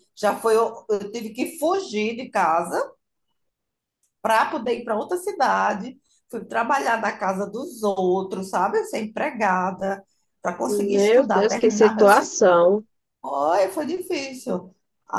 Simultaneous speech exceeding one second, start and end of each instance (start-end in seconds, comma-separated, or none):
10.7-12.4